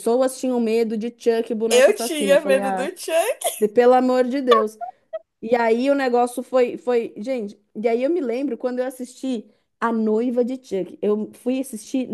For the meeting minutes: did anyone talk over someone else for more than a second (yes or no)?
yes